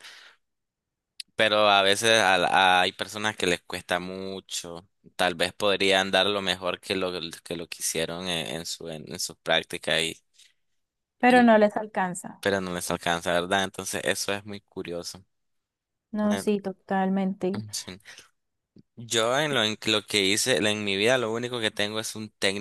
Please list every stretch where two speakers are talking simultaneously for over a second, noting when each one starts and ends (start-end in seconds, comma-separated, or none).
none